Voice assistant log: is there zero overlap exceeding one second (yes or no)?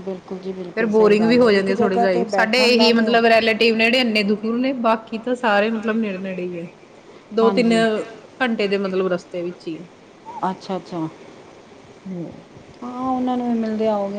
no